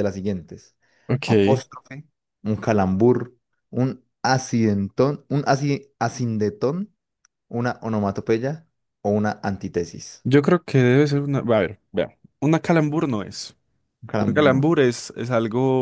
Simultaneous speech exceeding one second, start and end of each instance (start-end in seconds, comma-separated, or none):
none